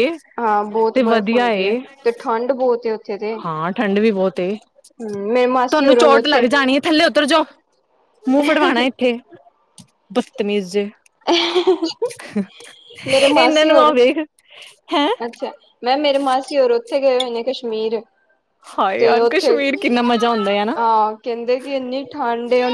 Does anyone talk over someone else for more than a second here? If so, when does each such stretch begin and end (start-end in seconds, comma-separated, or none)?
5.0-6.5